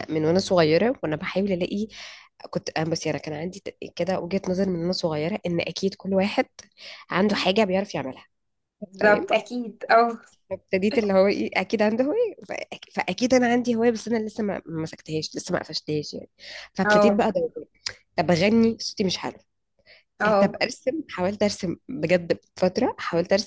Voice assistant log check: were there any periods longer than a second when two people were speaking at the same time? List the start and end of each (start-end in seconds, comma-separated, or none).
none